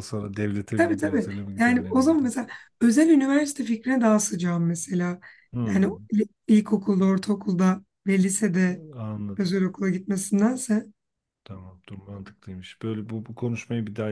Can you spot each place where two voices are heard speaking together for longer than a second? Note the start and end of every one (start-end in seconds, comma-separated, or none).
0.8-2.3